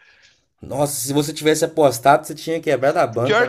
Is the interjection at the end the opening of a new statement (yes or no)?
yes